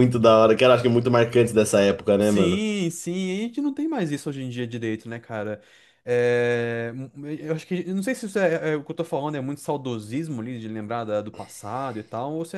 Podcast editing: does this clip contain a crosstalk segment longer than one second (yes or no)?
no